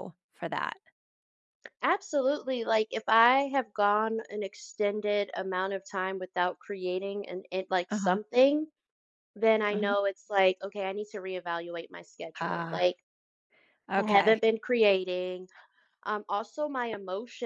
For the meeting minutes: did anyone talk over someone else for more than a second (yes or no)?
no